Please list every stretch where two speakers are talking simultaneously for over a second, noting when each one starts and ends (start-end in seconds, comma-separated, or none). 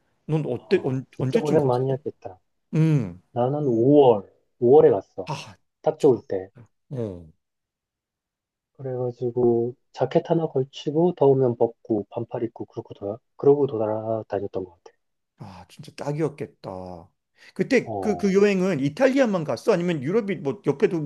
0.5-1.8